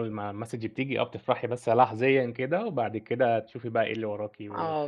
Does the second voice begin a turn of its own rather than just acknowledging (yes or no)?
no